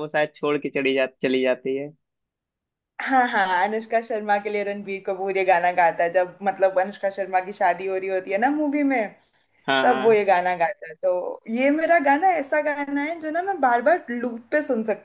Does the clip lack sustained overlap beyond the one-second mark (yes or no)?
yes